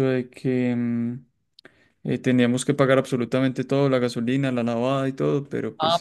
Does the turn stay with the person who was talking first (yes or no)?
no